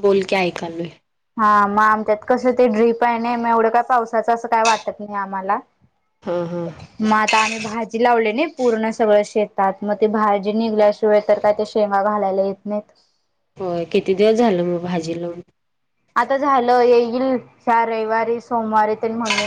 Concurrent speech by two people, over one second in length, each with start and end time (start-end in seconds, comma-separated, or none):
none